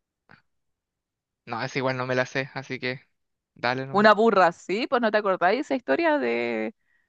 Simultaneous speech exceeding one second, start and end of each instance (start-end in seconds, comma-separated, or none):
none